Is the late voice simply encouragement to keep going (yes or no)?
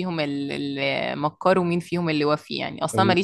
yes